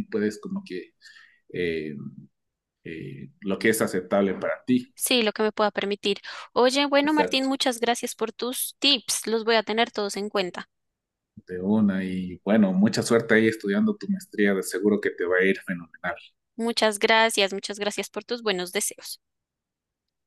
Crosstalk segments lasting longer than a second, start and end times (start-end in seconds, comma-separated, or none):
none